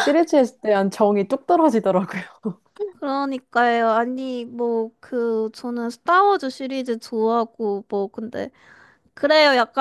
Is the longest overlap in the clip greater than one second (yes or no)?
no